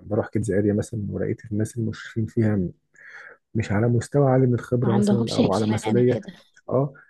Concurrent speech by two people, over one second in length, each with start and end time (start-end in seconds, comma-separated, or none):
4.8-6.2